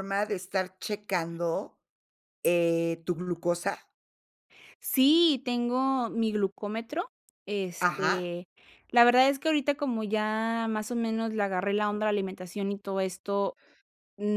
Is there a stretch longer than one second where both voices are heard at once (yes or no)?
no